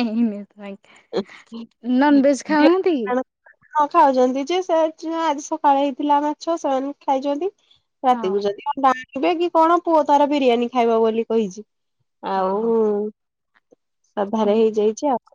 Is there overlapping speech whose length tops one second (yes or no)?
no